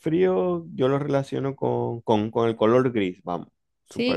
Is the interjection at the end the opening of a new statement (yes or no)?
yes